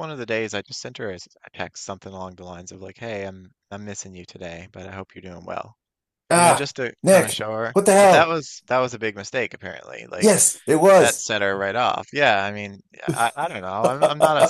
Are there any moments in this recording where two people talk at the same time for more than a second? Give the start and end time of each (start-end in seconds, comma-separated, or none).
6.3-8.4